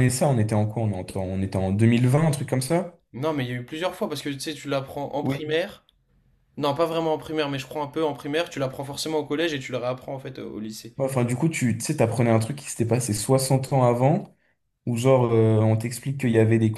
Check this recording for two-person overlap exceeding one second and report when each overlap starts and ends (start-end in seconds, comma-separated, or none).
none